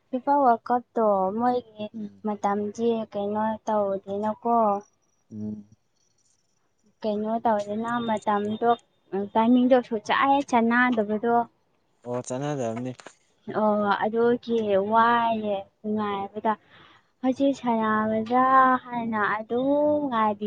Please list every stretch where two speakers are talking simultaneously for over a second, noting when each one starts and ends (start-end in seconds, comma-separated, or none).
none